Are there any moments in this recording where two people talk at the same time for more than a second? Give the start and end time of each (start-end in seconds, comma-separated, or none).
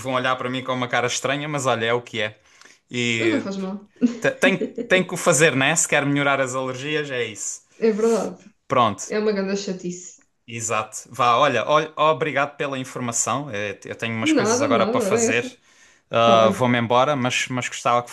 14.2-15.4